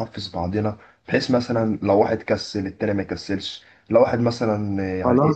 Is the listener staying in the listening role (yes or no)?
yes